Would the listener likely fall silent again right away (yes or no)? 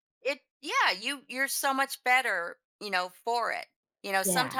yes